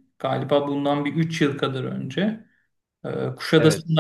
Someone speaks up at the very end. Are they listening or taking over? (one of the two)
listening